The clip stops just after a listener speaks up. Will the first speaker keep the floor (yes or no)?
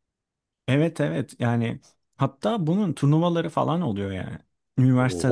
yes